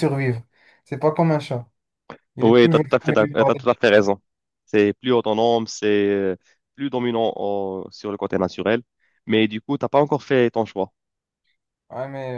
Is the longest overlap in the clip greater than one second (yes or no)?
yes